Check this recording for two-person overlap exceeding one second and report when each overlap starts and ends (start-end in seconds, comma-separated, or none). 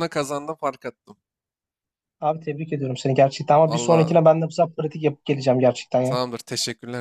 none